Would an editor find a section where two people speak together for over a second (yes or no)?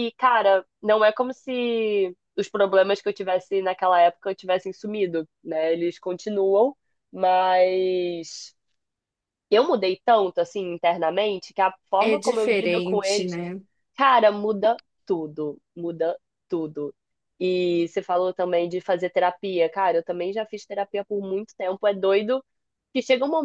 yes